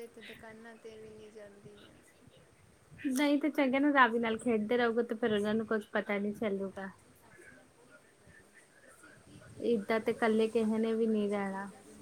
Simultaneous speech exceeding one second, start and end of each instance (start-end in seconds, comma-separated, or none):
none